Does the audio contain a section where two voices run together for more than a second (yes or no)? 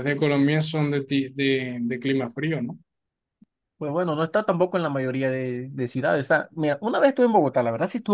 no